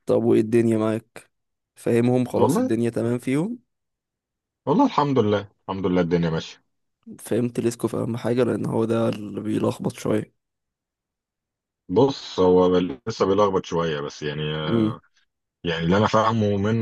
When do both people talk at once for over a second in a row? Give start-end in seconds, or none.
none